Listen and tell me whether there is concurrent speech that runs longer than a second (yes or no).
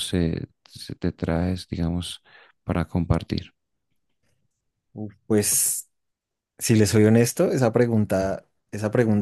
no